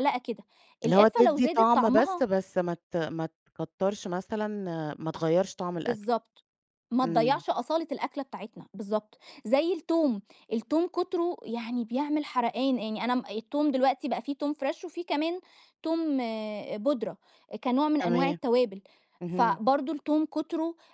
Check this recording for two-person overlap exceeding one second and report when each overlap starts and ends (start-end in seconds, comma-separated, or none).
0.8-2.3